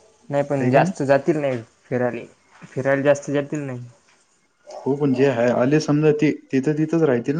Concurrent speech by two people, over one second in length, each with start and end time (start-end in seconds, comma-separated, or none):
none